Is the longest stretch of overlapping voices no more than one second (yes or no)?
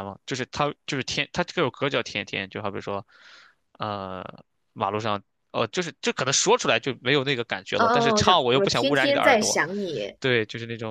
no